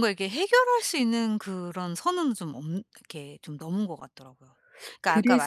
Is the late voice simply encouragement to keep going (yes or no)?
no